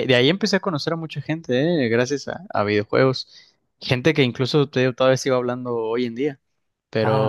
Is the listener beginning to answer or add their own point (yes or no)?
no